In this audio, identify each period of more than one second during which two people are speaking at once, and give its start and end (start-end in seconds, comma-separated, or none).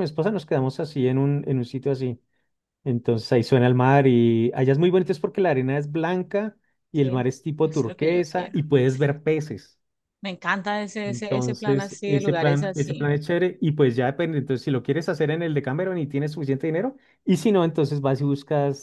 6.9-8.6, 11.0-13.1